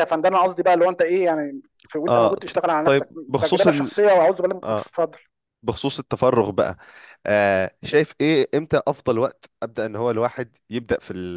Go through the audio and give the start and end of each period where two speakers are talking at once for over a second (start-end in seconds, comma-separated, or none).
2.1-3.9